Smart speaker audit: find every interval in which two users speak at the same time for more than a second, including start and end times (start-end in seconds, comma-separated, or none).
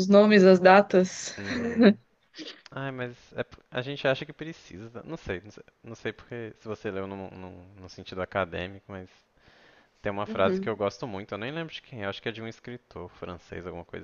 none